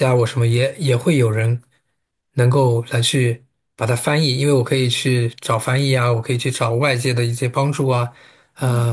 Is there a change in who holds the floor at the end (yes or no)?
no